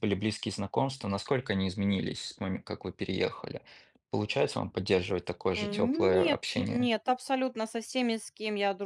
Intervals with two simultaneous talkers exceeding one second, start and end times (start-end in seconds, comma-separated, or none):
5.5-6.9